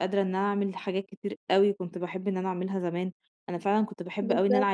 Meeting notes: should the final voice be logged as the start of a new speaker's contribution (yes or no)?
no